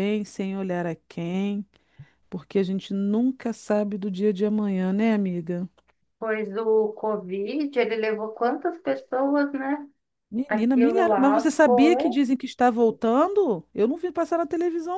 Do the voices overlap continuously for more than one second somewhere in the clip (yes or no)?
yes